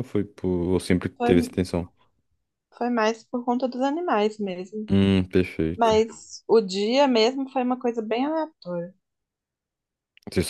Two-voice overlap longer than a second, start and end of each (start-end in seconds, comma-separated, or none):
none